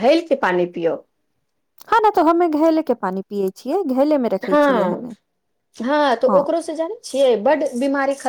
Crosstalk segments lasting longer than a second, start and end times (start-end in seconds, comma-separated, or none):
none